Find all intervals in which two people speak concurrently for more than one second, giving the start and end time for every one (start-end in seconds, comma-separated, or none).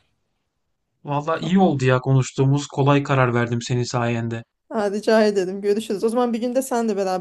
none